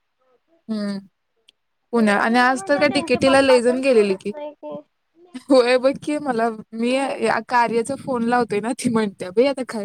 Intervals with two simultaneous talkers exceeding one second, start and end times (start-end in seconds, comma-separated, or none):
1.9-4.3